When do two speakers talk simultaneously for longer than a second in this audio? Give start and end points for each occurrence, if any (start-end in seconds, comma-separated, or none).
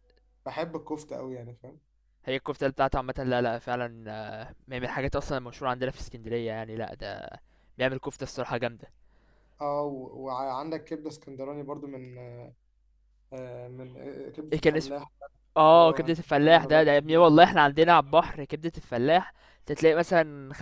15.7-17.6